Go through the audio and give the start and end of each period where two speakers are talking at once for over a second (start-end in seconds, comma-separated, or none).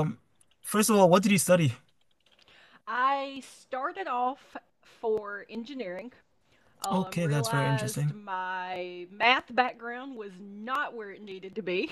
6.9-8.2